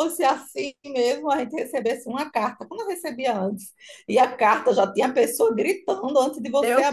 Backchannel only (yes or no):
no